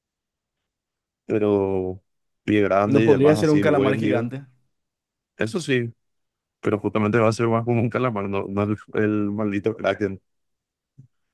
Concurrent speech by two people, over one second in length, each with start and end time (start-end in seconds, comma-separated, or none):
2.8-4.3